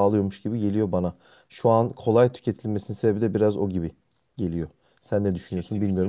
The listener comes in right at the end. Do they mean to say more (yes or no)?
yes